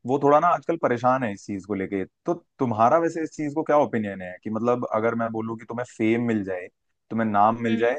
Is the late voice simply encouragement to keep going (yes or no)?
yes